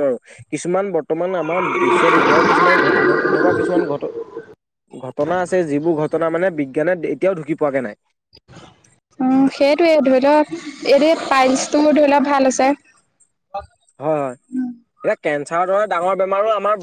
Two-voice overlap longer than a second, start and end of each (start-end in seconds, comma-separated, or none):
none